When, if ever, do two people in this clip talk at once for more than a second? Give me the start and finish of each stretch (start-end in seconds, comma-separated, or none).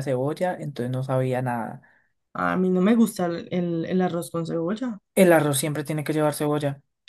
none